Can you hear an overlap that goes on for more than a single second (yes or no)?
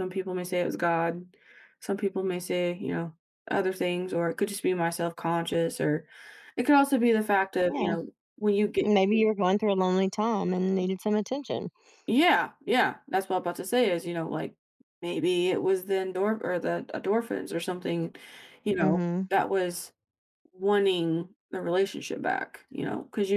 no